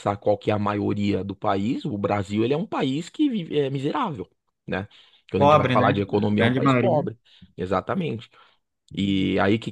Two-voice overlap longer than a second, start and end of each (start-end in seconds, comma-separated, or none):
5.3-7.1